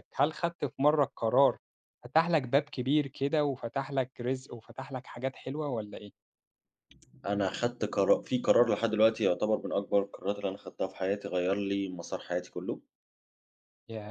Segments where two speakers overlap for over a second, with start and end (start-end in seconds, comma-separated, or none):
none